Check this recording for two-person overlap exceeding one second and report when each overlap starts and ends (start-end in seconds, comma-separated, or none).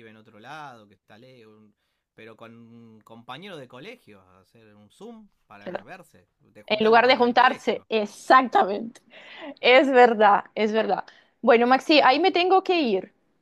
6.7-7.9